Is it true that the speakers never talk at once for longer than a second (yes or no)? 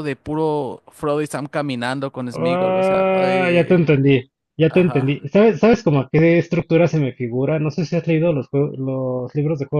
no